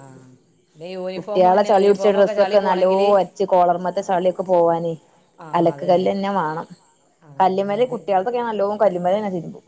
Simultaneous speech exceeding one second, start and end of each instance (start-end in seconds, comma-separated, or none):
1.2-3.3